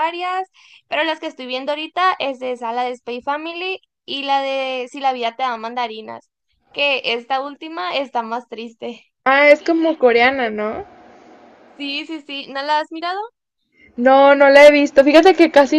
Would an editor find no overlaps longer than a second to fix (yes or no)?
yes